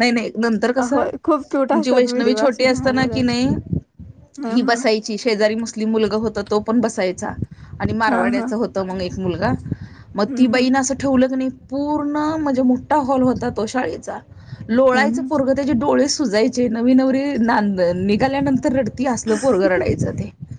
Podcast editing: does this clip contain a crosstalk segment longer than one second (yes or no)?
yes